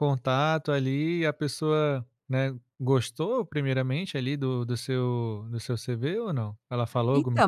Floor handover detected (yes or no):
yes